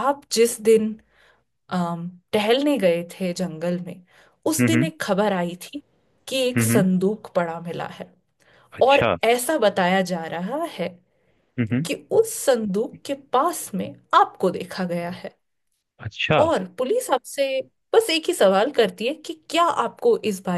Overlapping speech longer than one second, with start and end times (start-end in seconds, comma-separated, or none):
none